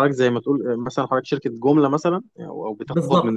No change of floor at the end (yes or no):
no